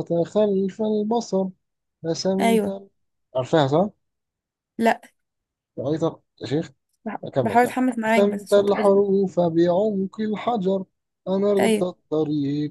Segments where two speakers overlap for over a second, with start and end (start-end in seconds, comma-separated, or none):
7.2-9.0